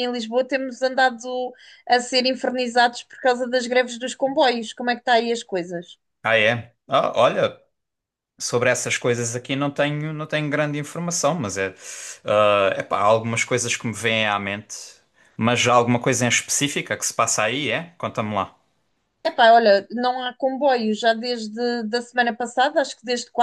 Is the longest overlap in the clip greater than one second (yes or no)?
no